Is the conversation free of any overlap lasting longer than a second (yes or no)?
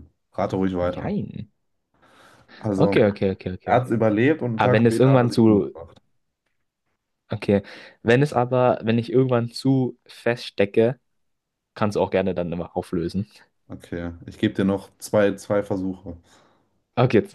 no